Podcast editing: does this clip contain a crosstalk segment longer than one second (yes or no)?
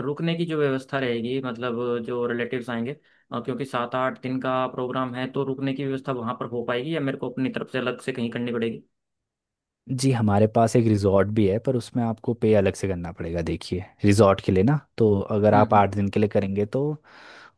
no